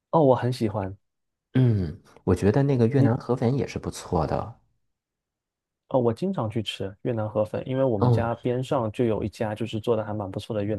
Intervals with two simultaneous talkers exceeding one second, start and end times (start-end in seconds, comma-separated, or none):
none